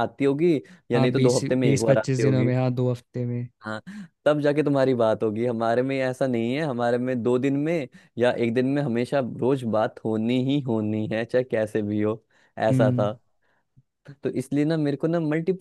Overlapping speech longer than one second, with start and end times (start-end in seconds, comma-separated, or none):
0.9-2.5